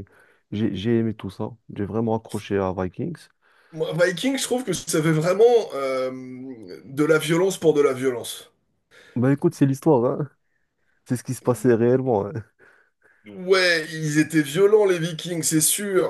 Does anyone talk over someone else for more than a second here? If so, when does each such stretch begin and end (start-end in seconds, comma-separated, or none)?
none